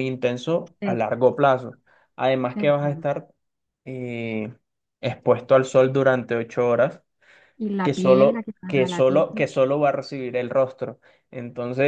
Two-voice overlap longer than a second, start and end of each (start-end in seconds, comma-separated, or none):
7.8-9.2